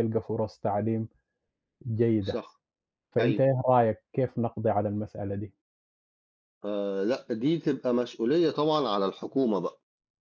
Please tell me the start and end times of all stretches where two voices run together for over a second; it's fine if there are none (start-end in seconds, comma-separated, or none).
none